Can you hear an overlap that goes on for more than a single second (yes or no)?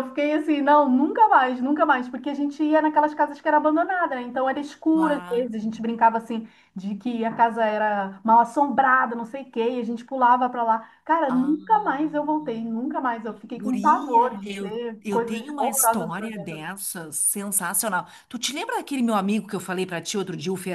yes